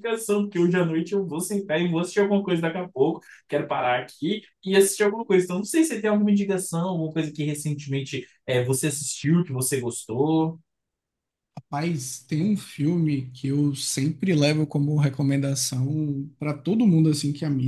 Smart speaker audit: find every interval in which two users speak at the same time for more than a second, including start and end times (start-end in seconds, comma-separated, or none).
none